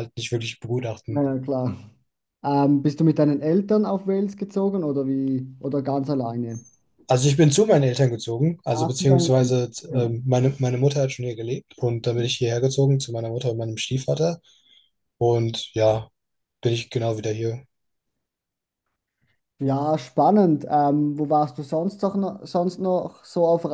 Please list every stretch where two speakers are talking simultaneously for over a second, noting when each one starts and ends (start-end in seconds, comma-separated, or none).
8.7-10.2